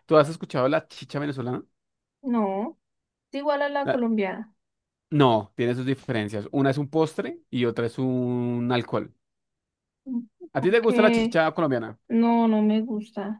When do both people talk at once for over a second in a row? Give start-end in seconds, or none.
none